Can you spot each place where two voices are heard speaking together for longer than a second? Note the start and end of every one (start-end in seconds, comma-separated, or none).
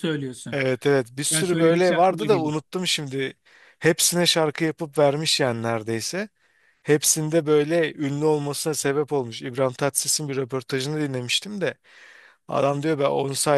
1.3-2.5